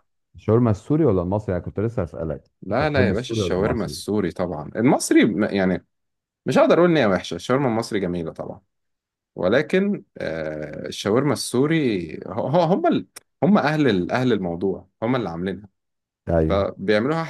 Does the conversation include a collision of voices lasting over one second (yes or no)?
yes